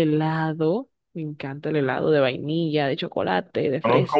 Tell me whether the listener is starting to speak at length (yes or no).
yes